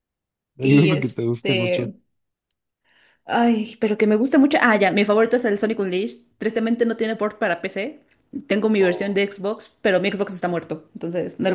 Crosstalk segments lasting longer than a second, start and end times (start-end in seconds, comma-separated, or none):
0.6-1.9